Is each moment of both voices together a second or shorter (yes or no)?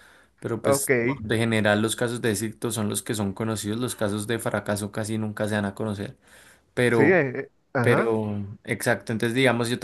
yes